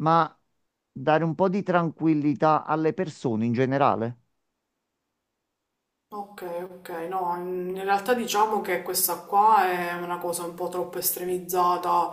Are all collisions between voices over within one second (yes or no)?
yes